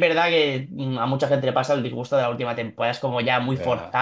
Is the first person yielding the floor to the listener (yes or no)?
no